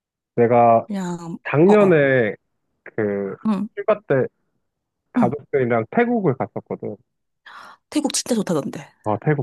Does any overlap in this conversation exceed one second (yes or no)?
no